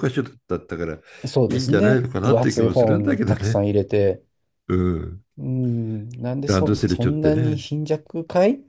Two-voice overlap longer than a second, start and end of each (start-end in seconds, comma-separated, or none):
1.6-3.6, 6.5-7.7